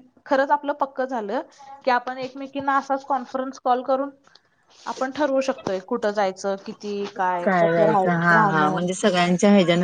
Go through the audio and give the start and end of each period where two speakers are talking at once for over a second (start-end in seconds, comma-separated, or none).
none